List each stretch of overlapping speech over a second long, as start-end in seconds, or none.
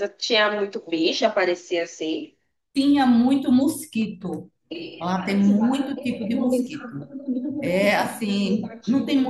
none